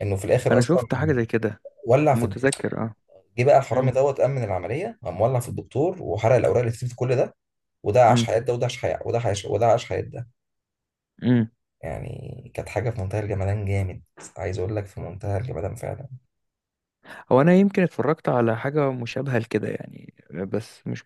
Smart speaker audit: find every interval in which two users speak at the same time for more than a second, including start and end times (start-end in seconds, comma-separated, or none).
none